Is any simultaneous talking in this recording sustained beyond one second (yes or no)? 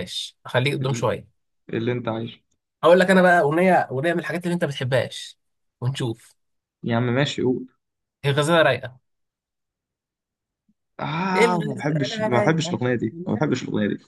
yes